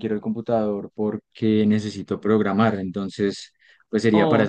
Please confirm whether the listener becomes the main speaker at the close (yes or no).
no